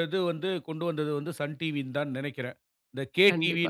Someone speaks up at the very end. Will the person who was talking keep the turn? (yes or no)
no